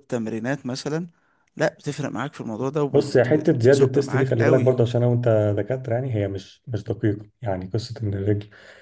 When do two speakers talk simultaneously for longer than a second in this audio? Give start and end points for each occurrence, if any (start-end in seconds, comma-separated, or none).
2.9-4.8